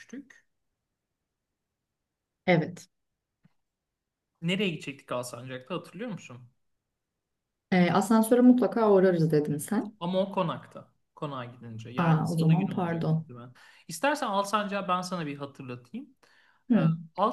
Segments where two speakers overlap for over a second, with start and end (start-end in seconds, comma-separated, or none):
12.0-13.2